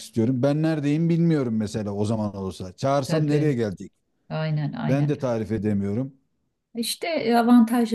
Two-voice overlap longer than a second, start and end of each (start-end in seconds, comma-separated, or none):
none